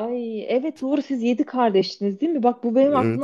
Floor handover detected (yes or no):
no